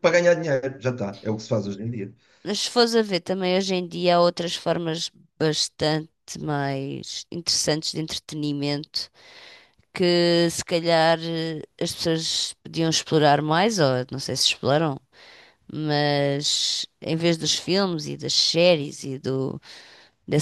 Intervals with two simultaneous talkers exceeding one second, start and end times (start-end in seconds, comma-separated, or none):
none